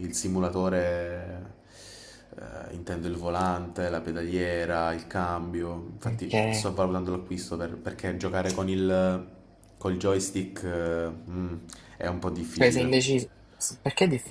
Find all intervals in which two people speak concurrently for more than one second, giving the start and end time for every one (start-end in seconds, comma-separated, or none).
none